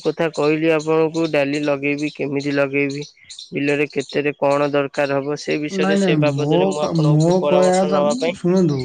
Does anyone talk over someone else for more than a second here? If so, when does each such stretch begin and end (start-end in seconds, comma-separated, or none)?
5.8-8.0